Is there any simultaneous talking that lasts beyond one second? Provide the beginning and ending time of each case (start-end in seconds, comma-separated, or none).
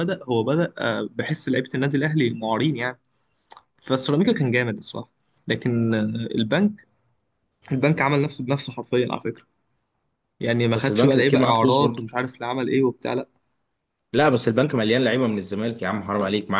10.8-12.1